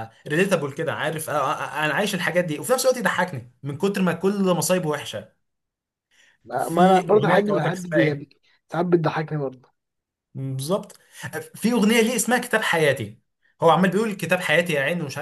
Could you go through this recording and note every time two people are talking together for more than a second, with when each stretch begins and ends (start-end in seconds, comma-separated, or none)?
6.6-8.3